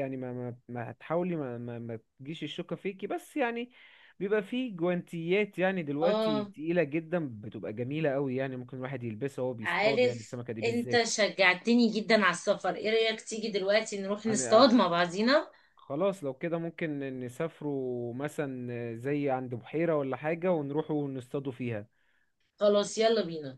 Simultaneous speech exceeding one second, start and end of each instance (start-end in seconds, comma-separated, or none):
9.6-11.1